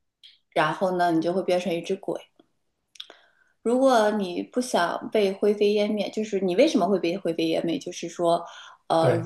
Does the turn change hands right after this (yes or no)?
no